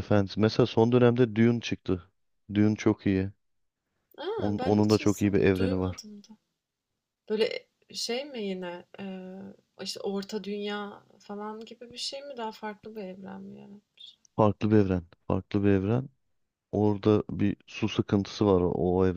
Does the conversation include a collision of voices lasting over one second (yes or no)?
yes